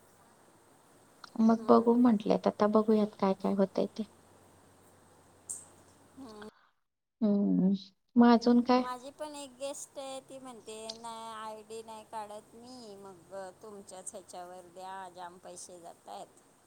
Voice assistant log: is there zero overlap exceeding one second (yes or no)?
yes